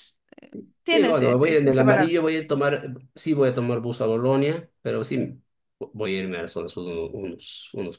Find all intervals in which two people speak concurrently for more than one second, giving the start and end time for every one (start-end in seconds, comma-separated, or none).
0.9-2.2